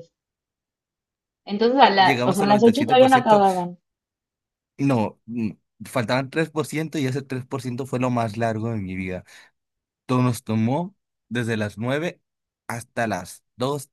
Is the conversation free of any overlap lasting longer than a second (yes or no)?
no